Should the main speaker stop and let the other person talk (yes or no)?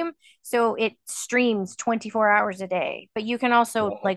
no